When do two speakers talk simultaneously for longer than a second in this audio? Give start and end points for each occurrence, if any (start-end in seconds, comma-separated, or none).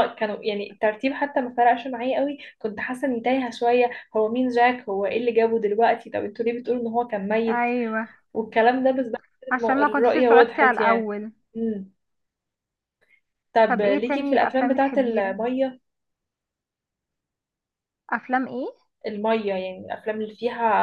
9.5-11.1, 13.6-15.4